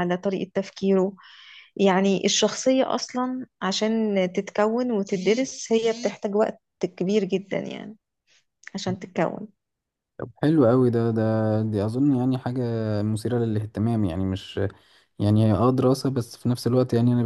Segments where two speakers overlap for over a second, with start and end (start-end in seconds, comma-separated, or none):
none